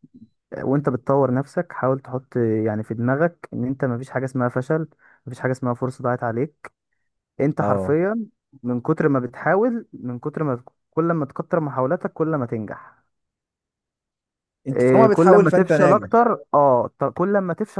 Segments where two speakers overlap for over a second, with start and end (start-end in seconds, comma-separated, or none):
14.7-16.1